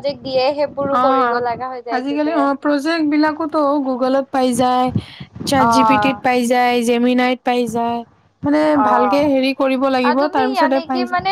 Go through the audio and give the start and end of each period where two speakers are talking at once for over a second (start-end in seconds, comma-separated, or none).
none